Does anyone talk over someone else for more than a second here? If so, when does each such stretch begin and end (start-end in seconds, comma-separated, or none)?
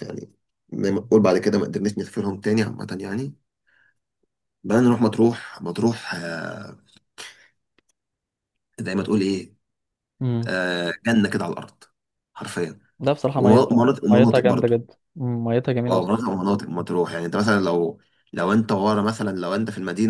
13.3-14.7